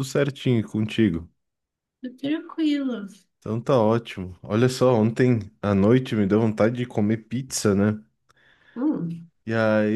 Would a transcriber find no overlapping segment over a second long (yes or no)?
yes